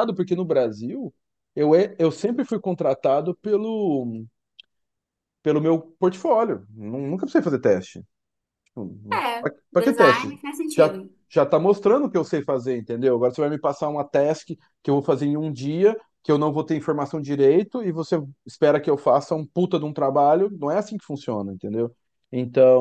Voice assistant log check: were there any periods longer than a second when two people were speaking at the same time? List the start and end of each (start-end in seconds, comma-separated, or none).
9.1-11.0